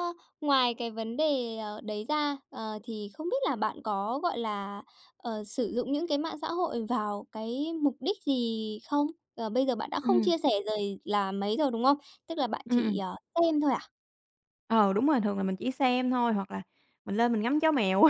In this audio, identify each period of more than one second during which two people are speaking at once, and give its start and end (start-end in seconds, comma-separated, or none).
none